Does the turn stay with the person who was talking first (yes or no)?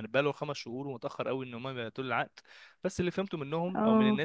yes